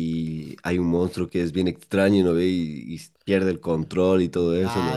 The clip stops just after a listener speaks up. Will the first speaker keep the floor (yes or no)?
no